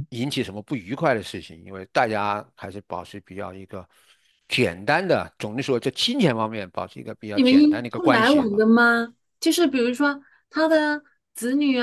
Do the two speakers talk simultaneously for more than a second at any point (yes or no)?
yes